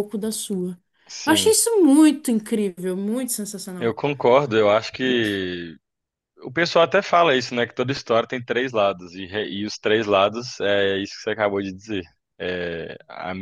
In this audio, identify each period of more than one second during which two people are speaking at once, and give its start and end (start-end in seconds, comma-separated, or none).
none